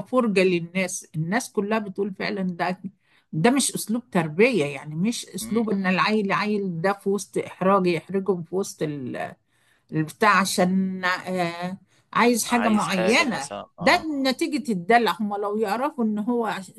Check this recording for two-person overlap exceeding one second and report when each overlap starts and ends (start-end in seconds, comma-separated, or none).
12.5-14.1